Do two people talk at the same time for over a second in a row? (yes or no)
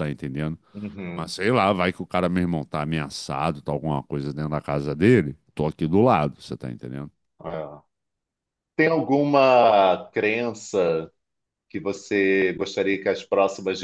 no